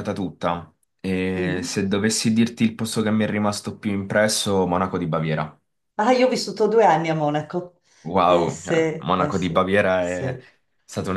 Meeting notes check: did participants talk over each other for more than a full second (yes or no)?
yes